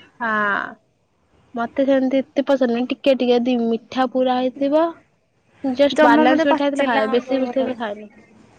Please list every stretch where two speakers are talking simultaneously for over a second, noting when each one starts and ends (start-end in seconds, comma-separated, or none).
6.0-7.8